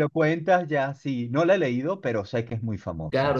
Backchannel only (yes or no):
no